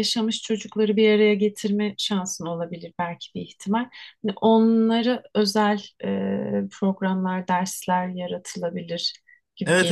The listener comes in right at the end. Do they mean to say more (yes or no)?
yes